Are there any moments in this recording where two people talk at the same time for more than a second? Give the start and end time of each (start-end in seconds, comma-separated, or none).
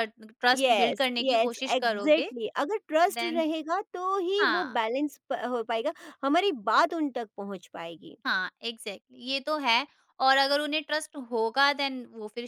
0.6-2.3